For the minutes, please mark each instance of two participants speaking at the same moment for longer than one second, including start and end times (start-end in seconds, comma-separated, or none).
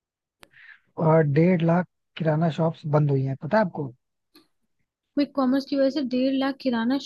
none